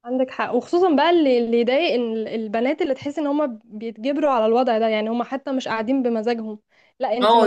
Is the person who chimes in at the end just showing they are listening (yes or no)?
no